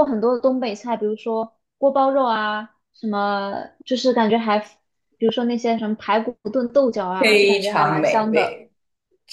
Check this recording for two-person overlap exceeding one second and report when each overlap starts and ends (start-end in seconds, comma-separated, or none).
7.2-8.6